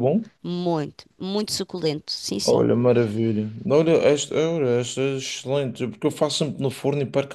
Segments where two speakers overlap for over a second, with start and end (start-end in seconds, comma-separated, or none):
none